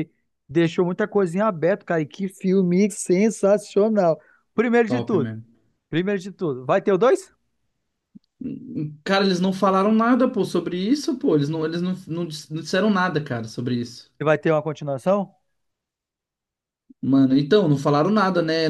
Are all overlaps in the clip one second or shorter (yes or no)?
yes